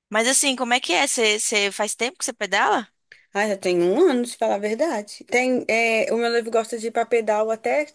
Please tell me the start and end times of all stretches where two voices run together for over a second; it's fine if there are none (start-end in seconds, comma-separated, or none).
none